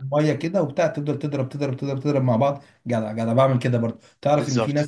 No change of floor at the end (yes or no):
yes